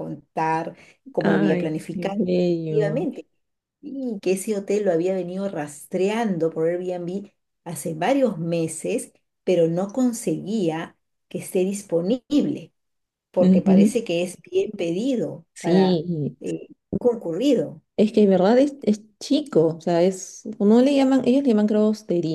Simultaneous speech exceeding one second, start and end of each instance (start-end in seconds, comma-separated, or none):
1.2-3.0